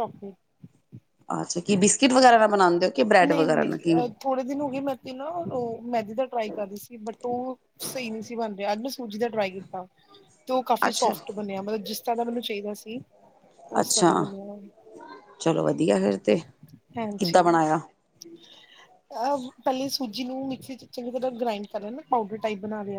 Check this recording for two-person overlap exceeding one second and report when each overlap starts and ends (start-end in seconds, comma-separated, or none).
none